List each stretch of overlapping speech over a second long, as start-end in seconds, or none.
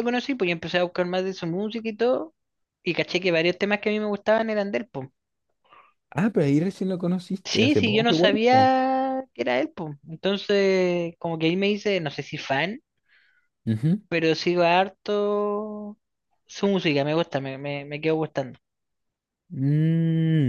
7.4-8.7